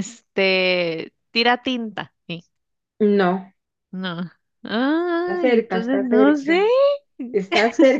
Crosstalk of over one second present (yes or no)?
yes